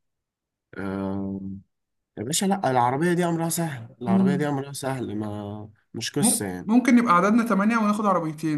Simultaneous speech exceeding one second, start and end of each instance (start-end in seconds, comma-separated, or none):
none